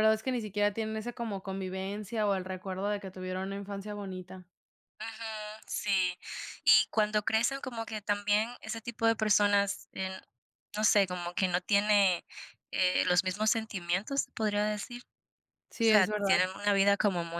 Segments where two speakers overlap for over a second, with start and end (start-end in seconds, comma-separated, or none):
none